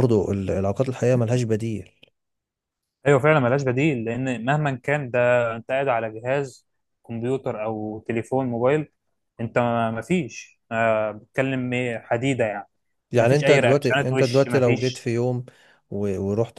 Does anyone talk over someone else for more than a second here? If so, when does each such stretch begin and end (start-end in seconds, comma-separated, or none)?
13.2-15.1